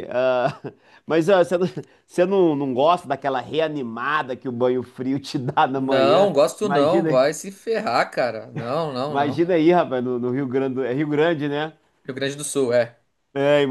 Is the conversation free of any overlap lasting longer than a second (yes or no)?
no